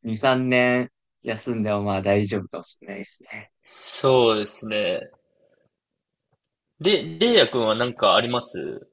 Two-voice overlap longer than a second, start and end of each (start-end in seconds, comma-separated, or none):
none